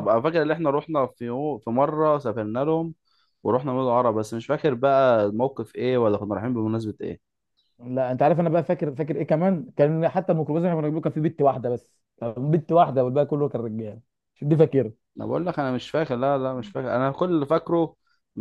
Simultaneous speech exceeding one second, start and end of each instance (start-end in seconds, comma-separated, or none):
none